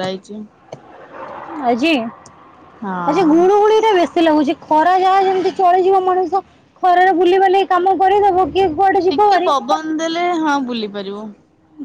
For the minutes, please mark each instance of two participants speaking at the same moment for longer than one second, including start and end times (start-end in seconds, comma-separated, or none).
none